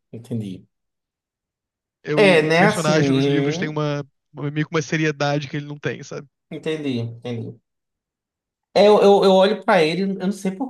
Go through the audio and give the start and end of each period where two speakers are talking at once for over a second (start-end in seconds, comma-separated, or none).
2.1-3.8